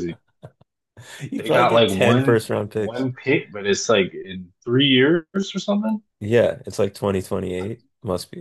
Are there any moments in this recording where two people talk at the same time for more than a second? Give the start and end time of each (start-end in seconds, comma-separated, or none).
1.4-3.1